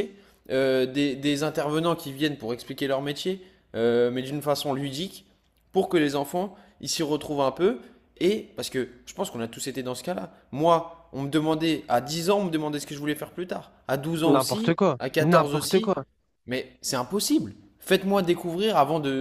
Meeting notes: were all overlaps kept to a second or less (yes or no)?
no